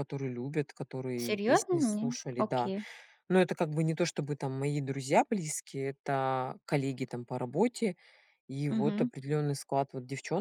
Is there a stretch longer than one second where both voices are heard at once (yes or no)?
yes